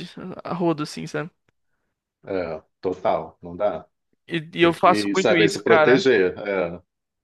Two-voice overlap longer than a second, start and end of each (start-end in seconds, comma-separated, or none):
4.6-6.1